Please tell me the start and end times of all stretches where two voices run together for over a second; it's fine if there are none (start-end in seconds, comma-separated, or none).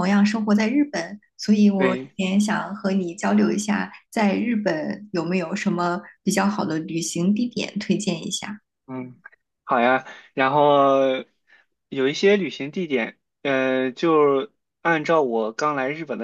none